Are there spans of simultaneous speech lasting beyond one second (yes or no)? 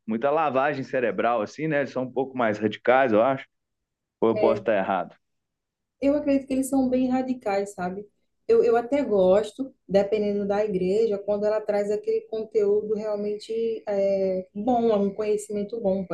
no